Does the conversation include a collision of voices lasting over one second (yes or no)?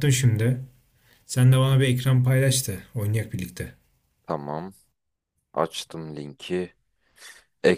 no